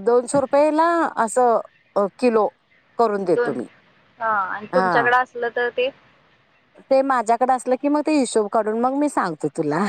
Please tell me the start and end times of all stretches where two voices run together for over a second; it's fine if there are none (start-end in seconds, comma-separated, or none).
none